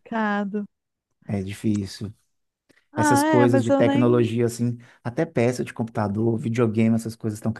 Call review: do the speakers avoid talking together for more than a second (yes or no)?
no